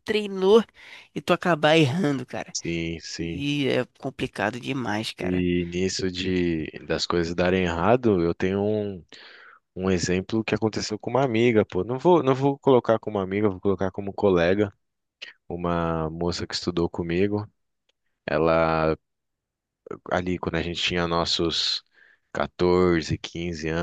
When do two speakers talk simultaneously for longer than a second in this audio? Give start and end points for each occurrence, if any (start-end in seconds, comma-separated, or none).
none